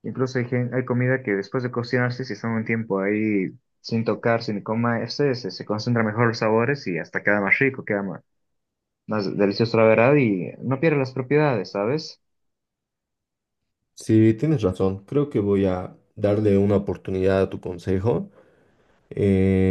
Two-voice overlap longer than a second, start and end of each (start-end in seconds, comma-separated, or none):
none